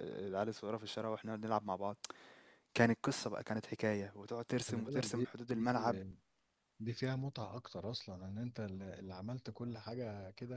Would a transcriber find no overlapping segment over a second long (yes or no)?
no